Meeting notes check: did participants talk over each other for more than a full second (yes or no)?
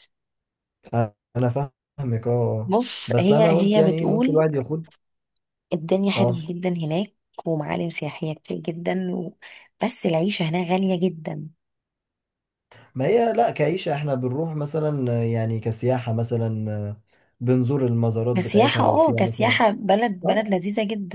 yes